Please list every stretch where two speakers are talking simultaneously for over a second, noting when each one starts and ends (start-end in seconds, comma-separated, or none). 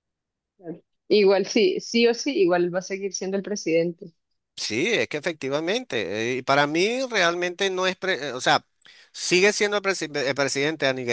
none